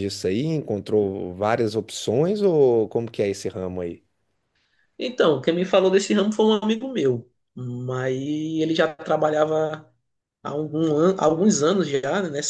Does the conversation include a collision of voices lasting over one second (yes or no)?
no